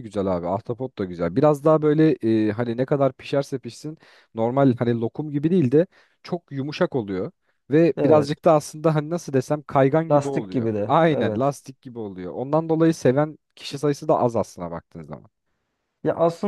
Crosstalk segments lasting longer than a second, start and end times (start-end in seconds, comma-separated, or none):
10.1-11.6